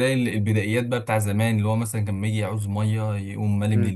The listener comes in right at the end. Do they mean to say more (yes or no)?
no